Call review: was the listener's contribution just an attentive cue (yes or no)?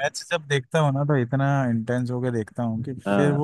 yes